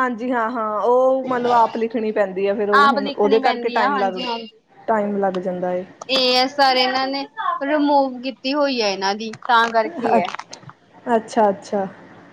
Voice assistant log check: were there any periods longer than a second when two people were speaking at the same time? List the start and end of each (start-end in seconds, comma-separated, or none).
2.8-4.2